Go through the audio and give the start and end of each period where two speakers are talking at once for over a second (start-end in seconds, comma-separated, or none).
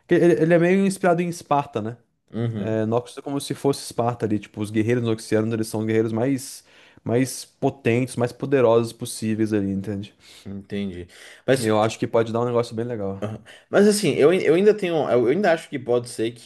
none